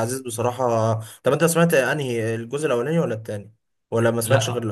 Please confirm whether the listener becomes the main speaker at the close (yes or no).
yes